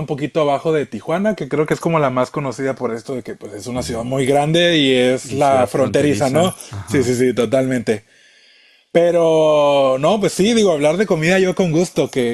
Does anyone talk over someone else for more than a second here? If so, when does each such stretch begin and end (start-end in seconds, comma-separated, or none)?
5.2-7.2